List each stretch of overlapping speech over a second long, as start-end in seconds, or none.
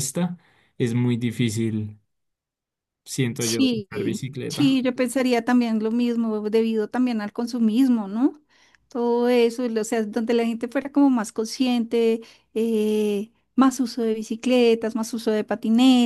3.4-4.8